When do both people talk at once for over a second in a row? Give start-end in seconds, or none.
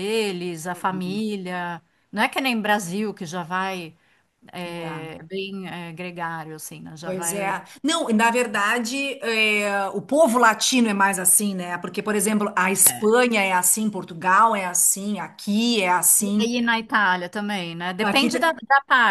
none